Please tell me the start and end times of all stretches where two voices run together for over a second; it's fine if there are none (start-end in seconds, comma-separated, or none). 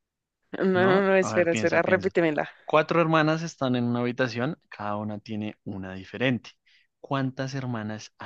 0.7-2.1